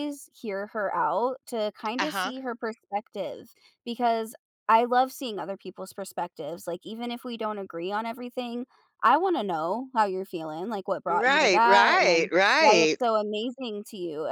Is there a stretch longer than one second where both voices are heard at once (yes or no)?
yes